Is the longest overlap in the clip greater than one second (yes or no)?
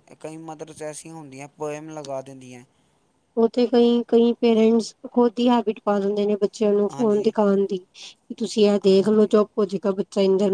no